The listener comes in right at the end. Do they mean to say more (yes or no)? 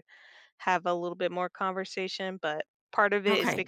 no